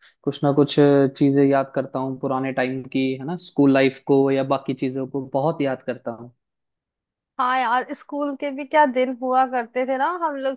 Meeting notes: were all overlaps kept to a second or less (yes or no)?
yes